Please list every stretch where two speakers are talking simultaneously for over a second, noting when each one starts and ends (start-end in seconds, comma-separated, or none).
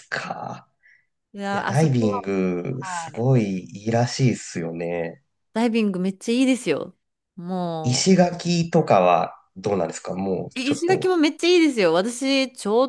1.5-3.2